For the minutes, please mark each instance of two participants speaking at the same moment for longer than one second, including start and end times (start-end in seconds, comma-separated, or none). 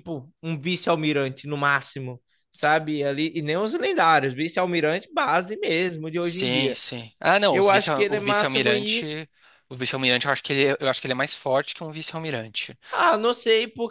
7.5-9.2